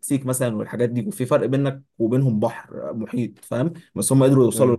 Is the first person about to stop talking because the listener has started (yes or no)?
no